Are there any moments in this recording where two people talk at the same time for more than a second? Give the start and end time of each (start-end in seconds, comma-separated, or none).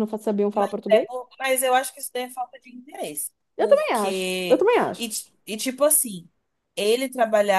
3.6-5.1